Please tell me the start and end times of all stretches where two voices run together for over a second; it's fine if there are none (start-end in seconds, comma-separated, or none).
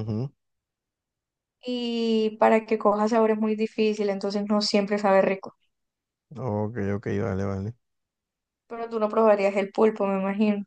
none